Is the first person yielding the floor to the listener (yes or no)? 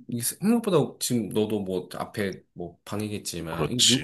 no